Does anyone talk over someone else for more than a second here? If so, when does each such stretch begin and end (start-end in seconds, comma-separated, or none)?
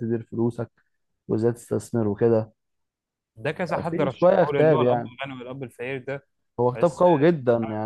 3.9-5.1